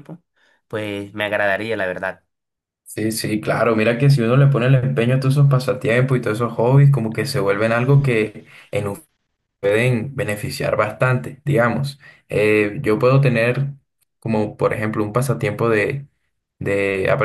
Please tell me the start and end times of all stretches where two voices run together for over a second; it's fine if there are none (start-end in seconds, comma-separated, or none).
none